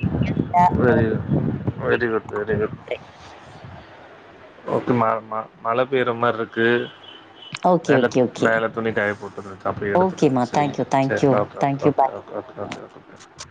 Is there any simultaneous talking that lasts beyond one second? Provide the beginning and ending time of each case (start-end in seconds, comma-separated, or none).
10.0-12.1